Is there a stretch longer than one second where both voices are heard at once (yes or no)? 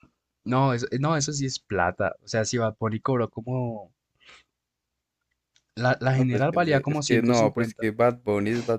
yes